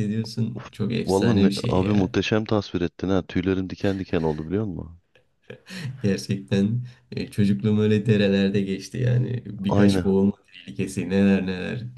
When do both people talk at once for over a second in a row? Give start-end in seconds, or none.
0.5-2.1